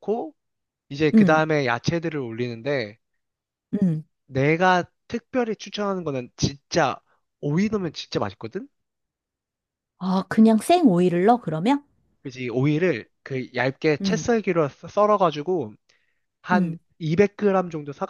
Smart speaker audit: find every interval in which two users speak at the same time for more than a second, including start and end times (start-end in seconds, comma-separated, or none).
none